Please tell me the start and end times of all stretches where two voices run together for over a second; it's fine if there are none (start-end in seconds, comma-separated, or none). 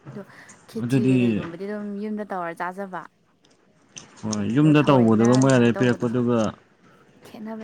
4.6-6.1